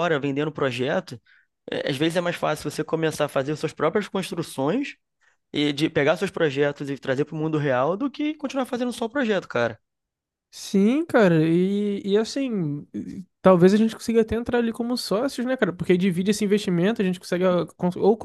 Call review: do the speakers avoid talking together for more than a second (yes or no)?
yes